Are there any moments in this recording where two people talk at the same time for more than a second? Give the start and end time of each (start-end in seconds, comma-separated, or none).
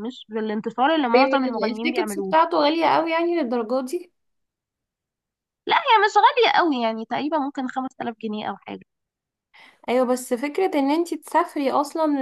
1.1-2.3